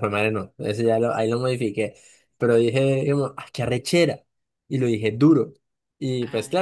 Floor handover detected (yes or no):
no